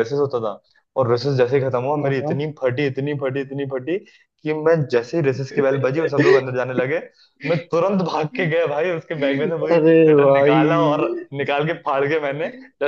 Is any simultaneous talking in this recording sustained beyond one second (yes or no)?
yes